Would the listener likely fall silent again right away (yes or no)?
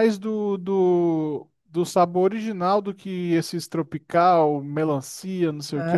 no